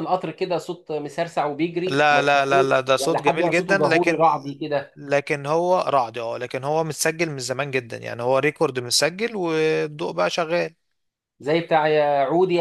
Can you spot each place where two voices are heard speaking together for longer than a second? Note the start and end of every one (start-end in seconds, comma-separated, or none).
1.9-4.2